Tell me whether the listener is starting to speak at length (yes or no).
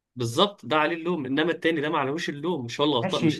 yes